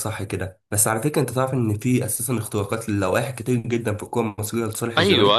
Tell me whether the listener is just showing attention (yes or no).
no